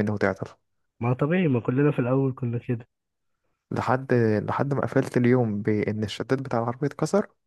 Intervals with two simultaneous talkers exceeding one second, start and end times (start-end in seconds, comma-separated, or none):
none